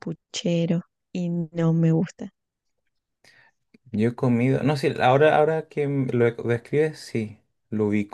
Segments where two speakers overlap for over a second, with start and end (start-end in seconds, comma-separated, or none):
none